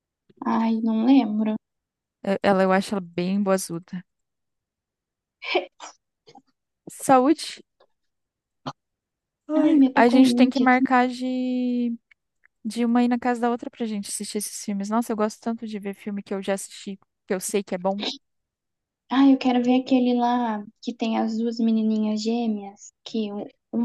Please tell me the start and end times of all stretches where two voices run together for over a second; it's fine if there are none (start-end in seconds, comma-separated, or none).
9.6-10.9